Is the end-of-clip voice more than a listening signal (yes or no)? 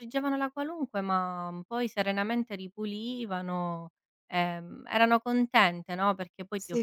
yes